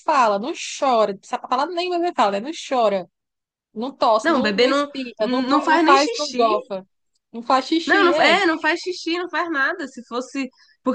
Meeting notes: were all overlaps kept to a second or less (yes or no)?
no